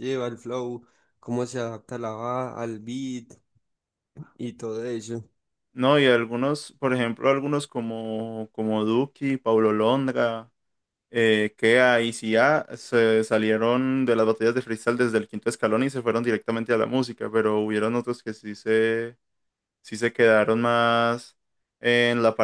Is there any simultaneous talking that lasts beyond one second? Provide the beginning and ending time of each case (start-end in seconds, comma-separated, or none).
none